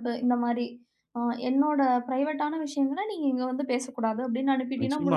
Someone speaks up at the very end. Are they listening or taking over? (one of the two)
taking over